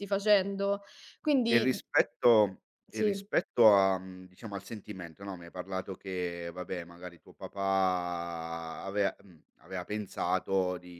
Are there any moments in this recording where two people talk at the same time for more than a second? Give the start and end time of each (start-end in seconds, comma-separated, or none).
none